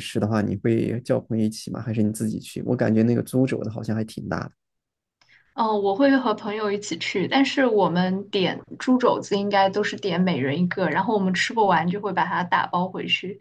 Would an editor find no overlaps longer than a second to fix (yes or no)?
yes